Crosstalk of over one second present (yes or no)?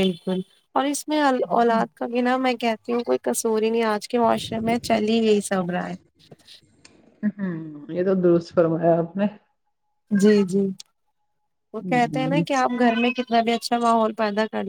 no